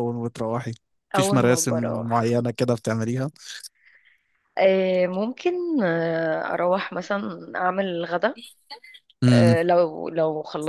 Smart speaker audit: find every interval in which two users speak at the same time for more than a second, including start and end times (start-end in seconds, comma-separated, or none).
1.1-2.4